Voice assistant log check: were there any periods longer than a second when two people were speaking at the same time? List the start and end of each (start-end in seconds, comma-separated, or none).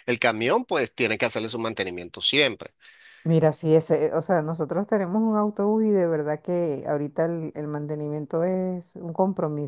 none